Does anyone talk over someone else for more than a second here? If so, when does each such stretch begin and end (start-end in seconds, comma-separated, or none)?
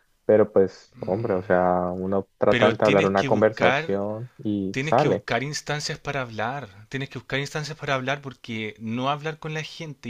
2.5-4.0